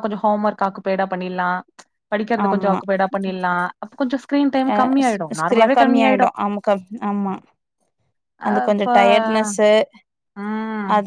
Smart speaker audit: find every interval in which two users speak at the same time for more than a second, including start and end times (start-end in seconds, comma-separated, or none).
none